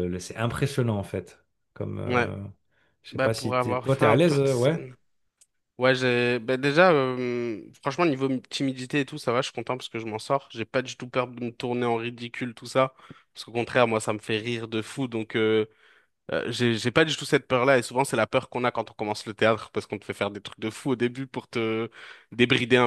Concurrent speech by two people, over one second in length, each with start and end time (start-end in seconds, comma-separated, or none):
3.1-4.8